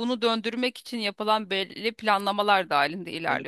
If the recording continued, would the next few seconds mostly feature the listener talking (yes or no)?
yes